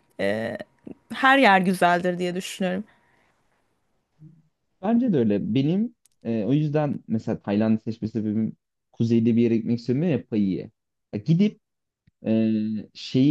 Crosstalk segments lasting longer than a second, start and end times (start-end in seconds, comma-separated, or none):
none